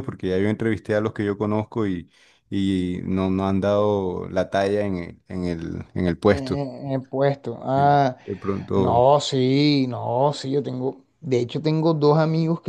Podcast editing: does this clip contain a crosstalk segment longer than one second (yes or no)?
no